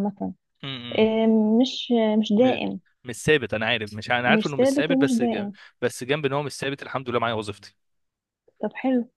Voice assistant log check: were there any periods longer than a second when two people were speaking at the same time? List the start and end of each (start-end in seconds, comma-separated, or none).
4.3-5.5